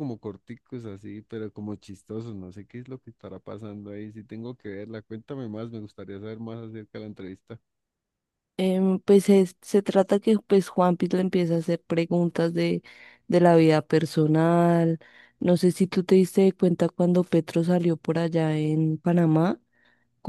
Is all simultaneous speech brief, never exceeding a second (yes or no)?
yes